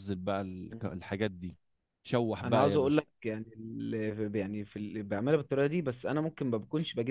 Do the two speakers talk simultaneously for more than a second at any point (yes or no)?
no